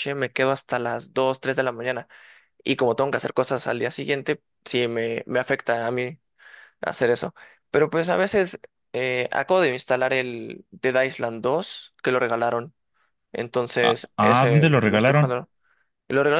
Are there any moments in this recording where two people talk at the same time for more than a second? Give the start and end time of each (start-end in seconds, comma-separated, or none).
13.8-15.4